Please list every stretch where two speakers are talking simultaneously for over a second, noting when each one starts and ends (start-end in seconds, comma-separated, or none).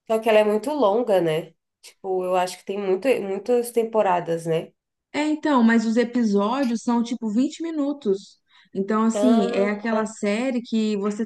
none